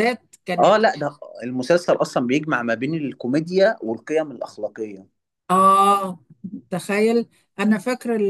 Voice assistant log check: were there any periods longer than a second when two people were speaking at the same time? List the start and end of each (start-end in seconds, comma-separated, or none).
none